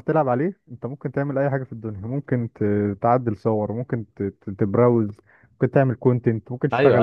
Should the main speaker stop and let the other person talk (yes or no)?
yes